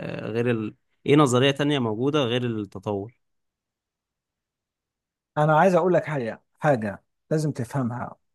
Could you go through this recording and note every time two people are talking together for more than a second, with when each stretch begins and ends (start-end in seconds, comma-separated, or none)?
none